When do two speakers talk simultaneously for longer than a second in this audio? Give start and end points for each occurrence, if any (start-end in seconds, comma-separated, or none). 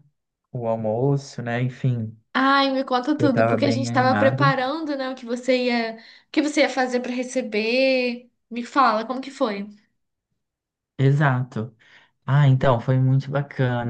3.2-4.5